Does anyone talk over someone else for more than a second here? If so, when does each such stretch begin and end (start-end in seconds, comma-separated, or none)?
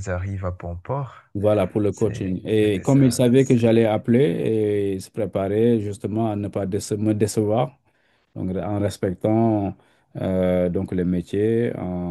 1.9-3.8